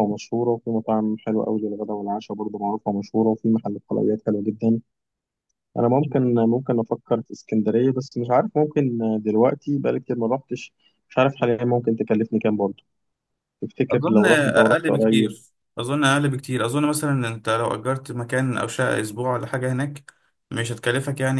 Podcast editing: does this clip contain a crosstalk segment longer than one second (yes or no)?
yes